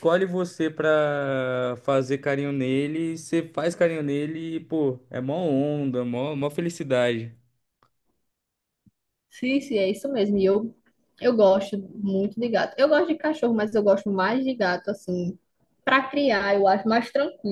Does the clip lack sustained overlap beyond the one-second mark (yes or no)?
yes